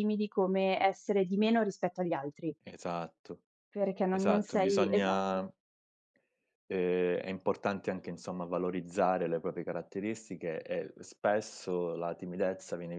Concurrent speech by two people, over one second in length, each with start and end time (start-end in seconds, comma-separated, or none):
4.1-5.4